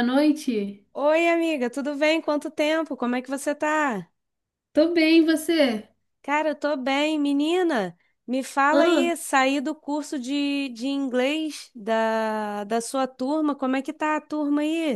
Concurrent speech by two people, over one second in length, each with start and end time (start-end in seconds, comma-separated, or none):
none